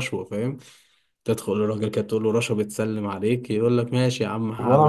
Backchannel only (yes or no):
no